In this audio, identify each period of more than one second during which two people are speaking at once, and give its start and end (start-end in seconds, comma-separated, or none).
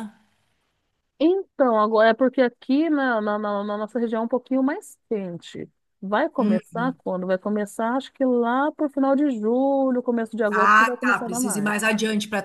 10.5-11.7